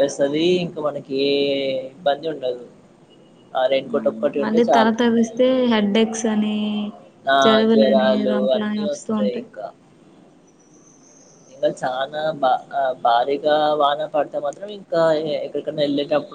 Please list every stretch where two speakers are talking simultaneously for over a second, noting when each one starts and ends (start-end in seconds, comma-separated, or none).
7.4-9.5